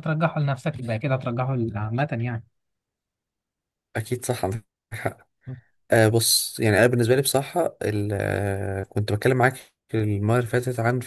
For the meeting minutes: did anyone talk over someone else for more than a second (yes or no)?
no